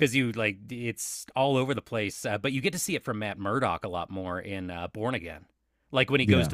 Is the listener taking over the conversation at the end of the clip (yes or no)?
no